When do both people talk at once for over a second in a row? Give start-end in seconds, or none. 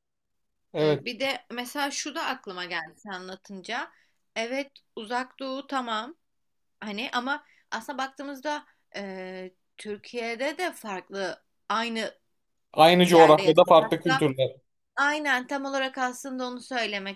13.1-14.2